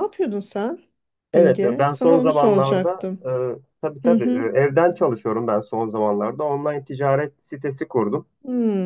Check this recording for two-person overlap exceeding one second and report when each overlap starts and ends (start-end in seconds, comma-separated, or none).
1.3-3.3